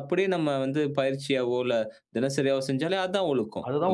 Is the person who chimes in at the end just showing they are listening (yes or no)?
no